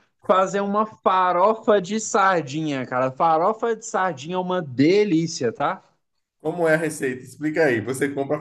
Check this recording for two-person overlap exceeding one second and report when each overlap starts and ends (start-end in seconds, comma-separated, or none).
none